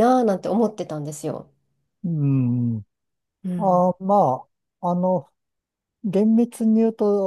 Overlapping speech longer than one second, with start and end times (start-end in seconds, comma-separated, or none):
none